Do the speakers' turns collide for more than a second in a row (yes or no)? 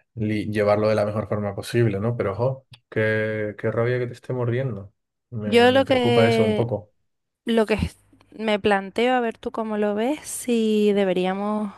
yes